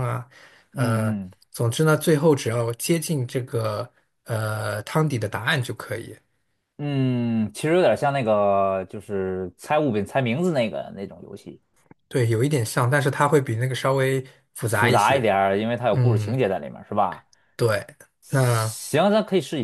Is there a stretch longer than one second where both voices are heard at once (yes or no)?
no